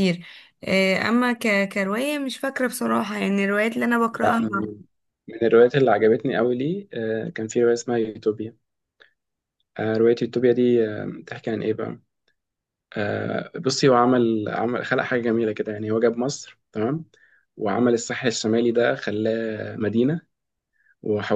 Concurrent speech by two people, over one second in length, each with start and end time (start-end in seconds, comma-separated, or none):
none